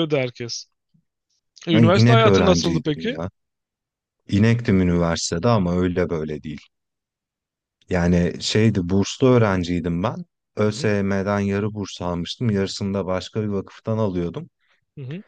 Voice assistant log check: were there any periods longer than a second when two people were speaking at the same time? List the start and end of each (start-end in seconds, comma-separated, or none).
1.7-3.2